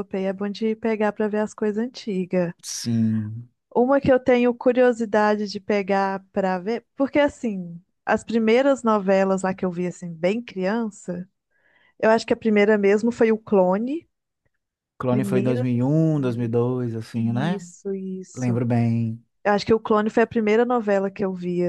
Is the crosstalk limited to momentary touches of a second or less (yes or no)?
no